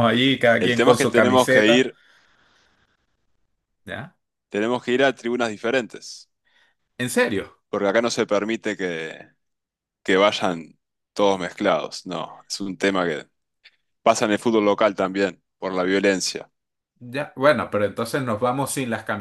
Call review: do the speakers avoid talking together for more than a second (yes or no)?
no